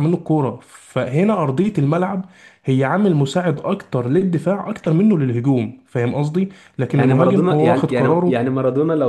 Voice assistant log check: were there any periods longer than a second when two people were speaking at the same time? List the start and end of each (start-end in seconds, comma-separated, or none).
6.9-8.4